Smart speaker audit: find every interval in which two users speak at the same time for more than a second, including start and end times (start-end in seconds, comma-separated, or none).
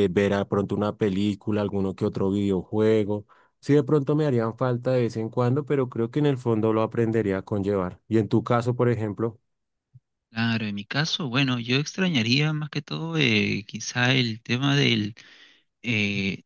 none